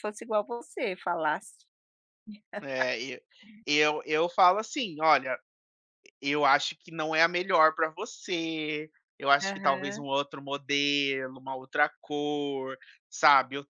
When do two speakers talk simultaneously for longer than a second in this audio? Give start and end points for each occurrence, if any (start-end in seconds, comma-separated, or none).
none